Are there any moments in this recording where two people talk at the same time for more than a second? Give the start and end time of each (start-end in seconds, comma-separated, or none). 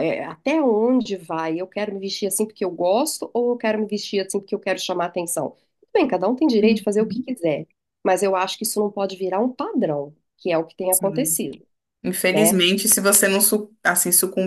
none